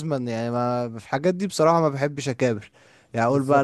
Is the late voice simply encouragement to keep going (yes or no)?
yes